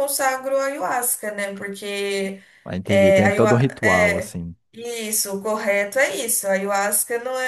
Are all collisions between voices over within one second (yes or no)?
no